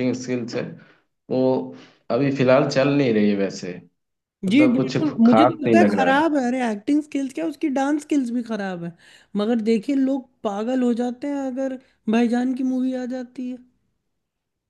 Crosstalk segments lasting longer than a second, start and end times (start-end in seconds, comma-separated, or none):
4.5-6.2